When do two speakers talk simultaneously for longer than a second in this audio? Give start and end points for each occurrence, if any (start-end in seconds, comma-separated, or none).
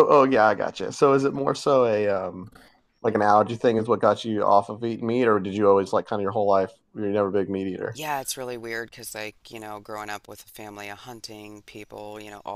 none